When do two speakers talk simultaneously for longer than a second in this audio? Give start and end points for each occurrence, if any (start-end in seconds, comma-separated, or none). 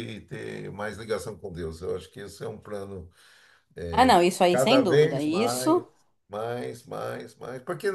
4.5-5.8